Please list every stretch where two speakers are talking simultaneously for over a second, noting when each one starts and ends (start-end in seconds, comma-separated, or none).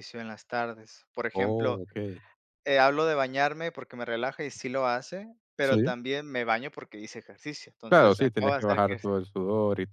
7.9-9.1